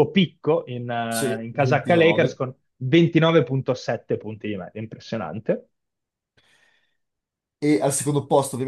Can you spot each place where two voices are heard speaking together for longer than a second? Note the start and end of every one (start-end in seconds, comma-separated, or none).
1.1-2.4